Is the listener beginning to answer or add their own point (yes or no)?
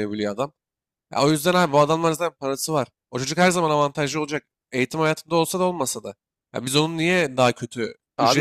no